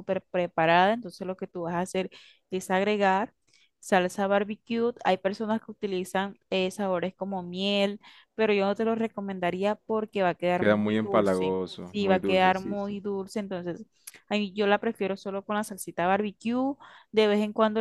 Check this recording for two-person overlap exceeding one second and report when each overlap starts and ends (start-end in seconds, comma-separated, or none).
10.6-12.9